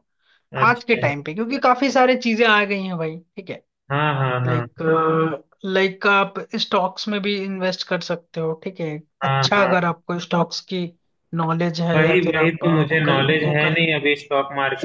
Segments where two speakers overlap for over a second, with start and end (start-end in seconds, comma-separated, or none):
11.9-13.8